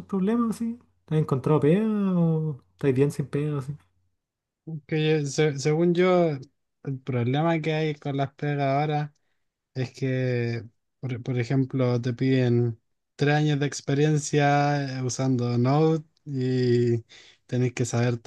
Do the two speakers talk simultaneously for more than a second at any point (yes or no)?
no